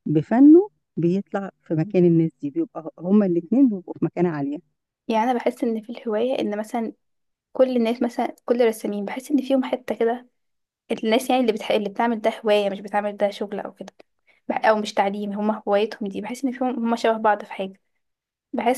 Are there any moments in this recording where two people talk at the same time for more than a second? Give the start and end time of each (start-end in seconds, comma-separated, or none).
none